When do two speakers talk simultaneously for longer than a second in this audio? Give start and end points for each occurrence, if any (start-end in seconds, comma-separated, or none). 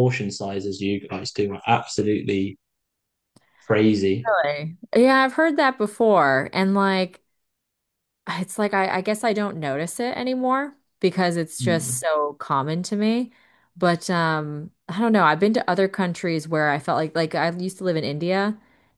none